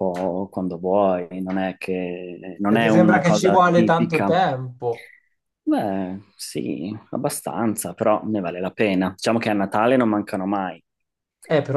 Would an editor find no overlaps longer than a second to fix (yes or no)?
no